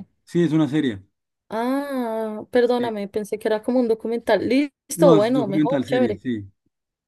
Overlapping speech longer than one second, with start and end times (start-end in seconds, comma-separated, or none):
5.0-6.2